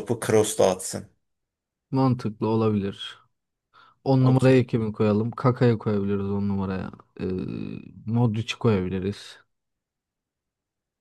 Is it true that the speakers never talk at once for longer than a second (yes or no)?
yes